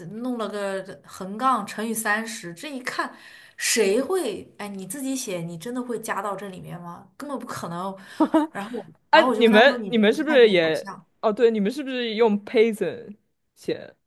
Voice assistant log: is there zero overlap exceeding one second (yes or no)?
no